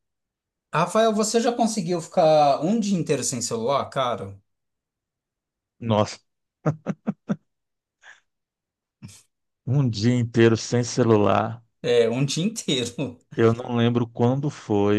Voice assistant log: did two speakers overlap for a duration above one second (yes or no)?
no